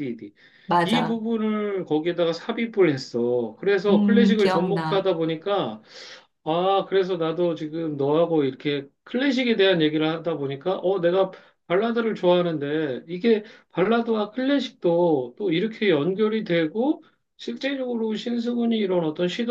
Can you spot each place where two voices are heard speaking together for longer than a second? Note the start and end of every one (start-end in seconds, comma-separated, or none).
3.9-5.1